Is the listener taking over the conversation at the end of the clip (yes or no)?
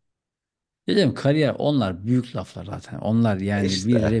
no